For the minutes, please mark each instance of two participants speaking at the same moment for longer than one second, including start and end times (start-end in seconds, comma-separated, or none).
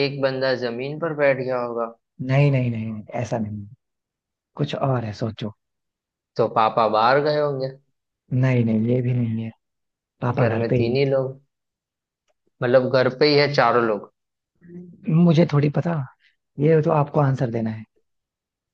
none